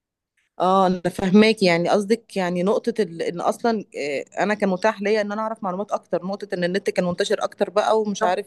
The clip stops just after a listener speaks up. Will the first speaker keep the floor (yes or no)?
no